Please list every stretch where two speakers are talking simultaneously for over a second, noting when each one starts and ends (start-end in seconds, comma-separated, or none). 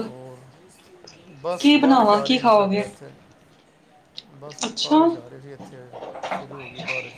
1.6-2.8